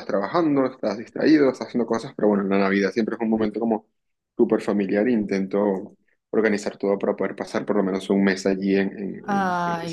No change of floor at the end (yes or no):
no